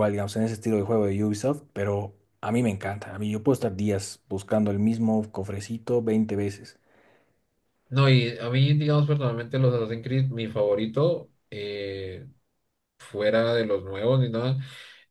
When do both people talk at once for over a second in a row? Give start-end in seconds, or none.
none